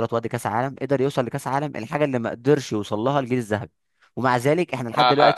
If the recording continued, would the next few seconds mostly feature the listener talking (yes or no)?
yes